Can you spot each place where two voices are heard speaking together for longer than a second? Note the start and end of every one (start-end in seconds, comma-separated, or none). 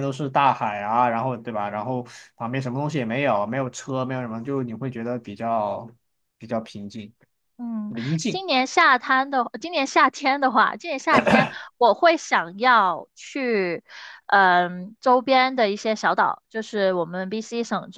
none